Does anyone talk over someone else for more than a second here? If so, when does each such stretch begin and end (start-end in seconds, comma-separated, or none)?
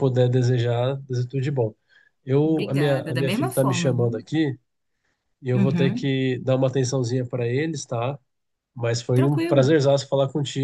2.4-4.3